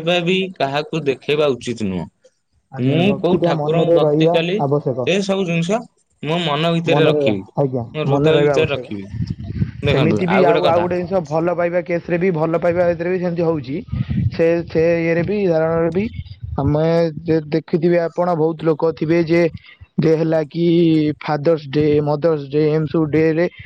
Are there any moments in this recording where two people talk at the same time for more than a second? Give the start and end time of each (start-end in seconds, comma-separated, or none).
2.8-5.1